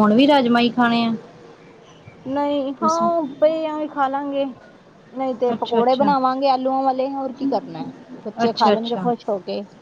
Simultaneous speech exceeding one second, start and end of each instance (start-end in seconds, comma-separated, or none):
none